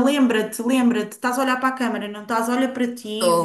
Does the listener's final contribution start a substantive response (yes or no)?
no